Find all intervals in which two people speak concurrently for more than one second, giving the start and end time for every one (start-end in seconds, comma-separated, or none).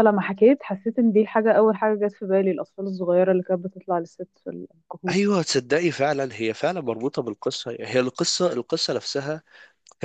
none